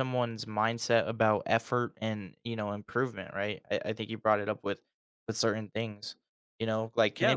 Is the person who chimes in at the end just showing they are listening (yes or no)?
yes